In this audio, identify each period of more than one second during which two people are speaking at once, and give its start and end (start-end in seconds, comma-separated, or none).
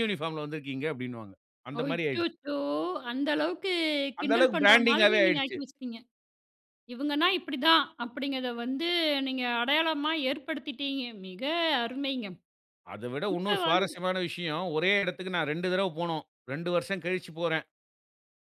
4.2-5.5